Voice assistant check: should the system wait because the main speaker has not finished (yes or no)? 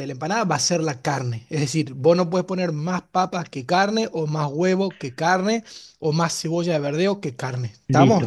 no